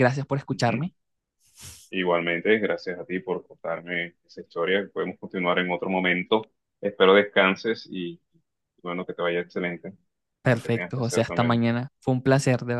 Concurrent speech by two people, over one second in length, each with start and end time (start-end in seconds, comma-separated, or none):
10.4-11.7